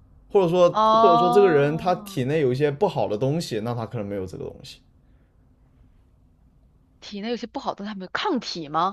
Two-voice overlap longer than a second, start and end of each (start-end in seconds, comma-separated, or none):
0.7-2.2